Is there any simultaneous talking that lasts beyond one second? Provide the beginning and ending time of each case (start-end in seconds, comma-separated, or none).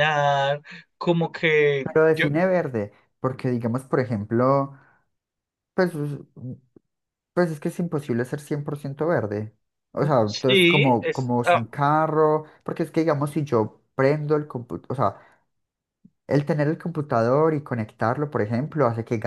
10.2-11.6